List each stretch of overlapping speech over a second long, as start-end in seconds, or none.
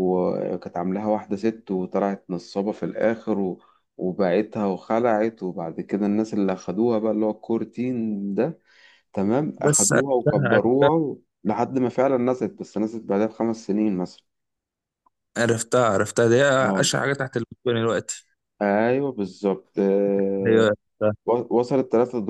9.6-10.9